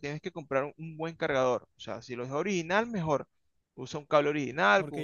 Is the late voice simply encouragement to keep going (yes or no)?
no